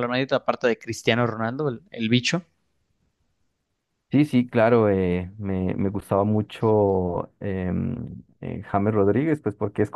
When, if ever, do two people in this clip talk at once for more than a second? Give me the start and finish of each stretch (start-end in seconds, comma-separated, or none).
none